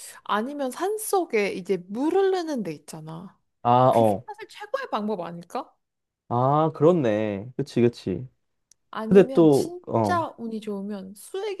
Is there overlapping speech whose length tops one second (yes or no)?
yes